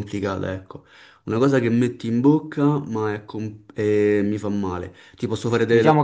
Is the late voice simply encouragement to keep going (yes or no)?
no